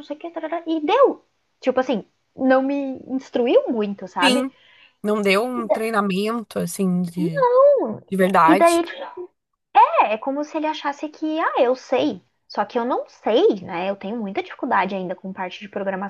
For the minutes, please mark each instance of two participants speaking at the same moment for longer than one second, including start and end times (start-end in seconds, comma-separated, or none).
none